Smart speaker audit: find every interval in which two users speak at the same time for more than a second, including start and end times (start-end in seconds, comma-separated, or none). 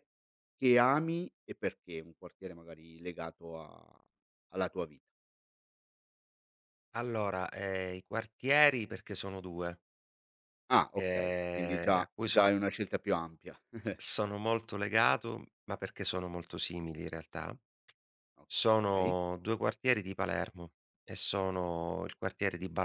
10.9-12.5